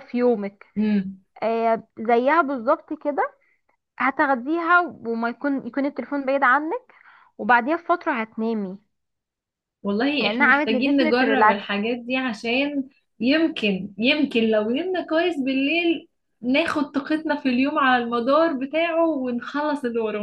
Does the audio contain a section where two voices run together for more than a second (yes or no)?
yes